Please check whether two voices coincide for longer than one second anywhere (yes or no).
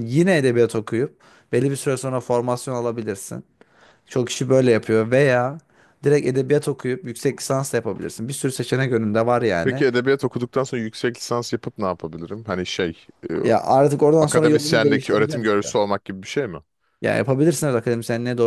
yes